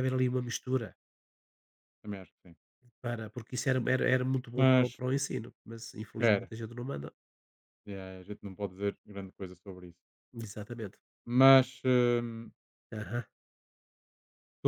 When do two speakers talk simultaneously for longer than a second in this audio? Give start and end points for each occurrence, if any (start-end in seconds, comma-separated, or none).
none